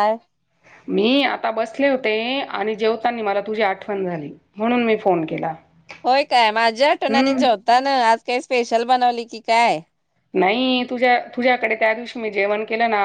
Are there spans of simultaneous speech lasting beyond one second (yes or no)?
no